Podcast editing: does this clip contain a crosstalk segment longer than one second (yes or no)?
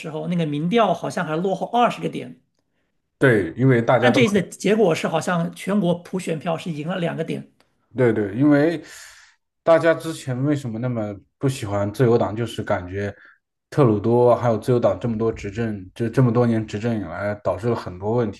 no